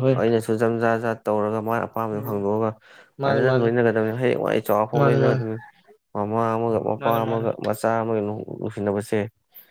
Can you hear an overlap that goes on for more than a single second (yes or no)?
no